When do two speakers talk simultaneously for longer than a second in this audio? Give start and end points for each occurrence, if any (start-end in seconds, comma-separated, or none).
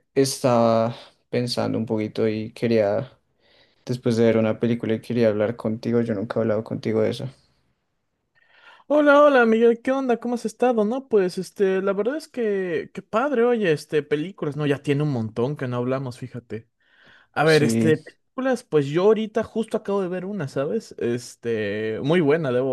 none